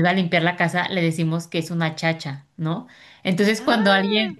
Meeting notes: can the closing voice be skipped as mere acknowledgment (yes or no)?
yes